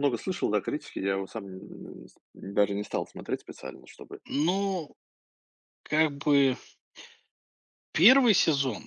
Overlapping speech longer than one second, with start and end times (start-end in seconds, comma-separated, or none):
none